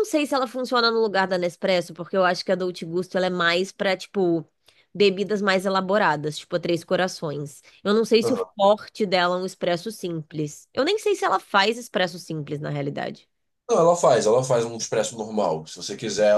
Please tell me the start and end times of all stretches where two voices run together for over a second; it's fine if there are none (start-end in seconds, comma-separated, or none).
none